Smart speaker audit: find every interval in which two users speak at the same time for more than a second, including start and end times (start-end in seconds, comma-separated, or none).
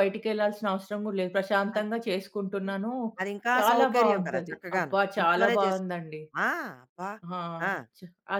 3.6-5.9